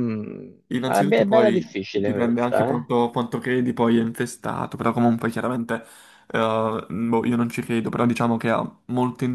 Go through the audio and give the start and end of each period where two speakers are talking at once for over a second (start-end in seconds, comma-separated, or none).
0.7-2.9